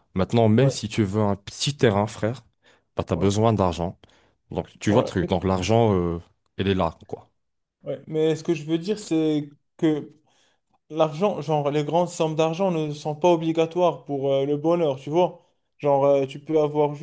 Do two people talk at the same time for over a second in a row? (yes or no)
no